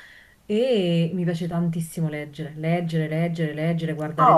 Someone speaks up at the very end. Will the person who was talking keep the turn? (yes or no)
no